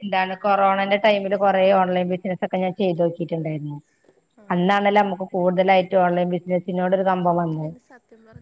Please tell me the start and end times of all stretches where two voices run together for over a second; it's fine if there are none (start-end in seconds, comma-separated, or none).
none